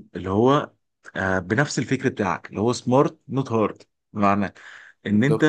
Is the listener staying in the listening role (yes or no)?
yes